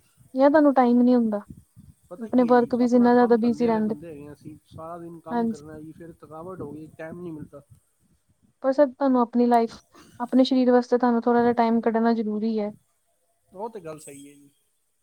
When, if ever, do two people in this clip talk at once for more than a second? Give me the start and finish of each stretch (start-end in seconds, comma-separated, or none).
2.2-3.9